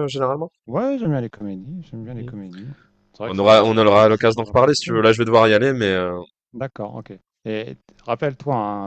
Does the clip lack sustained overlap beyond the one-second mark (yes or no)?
no